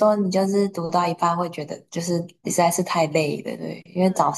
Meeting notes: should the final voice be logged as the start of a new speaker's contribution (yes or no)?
no